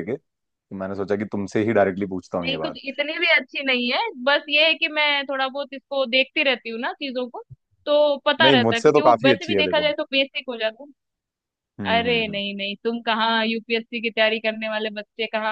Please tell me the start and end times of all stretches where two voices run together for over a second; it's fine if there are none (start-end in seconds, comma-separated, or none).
8.4-9.9